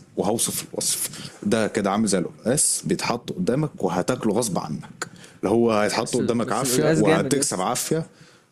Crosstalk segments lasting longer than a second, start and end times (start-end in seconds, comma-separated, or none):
6.0-7.7